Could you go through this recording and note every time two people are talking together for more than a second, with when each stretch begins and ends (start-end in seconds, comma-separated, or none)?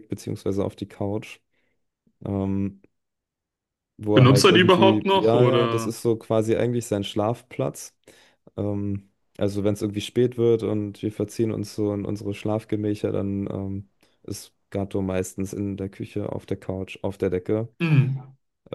4.1-5.9